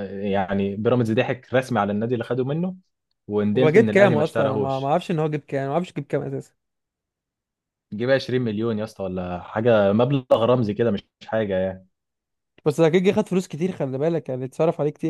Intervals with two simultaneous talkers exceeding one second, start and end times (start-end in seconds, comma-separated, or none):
3.6-4.9